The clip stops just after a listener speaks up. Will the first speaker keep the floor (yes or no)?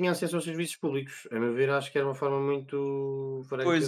no